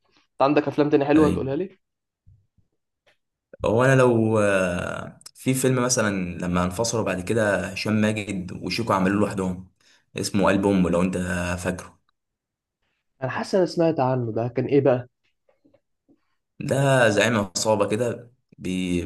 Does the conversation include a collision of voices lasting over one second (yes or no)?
no